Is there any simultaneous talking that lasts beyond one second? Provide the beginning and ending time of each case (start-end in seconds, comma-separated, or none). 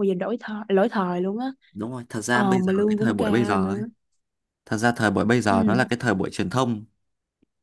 2.3-3.8